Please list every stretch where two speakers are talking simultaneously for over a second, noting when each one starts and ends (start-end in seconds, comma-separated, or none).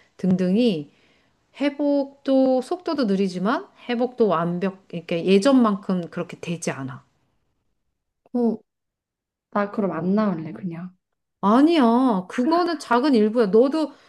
none